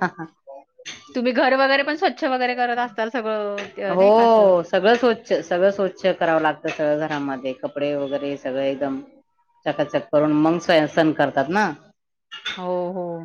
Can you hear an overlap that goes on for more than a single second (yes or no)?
no